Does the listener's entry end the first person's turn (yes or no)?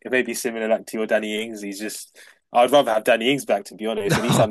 no